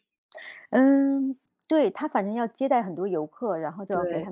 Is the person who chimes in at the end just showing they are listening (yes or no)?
yes